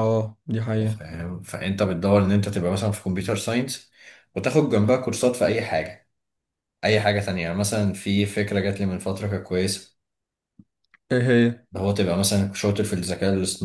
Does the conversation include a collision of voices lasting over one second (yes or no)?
no